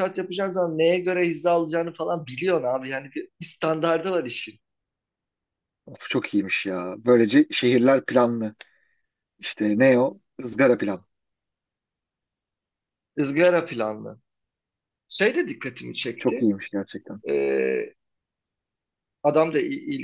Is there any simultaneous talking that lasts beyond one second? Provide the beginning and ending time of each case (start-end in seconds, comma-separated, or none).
none